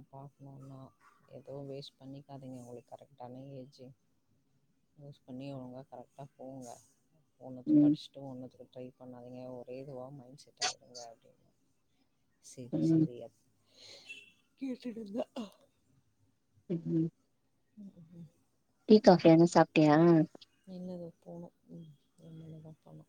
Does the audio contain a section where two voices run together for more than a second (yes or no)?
no